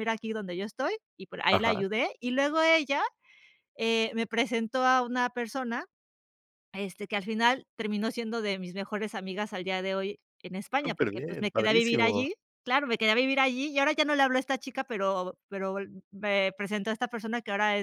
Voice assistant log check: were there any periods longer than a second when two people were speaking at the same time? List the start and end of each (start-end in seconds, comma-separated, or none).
10.8-12.3